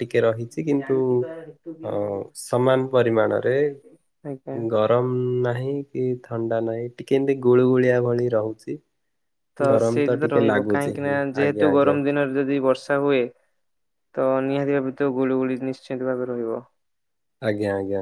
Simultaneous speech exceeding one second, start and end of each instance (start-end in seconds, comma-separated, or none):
9.7-11.9